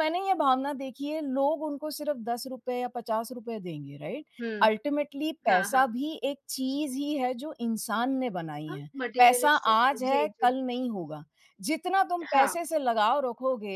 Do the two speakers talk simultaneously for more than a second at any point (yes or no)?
yes